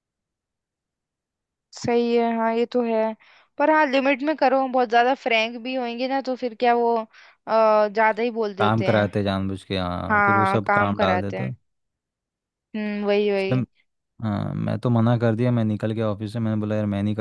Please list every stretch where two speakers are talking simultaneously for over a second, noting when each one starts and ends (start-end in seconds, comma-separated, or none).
10.1-11.5